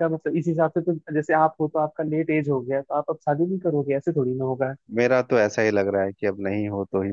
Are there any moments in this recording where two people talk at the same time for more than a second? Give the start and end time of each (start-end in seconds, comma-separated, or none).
none